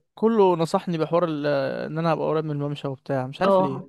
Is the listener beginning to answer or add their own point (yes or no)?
yes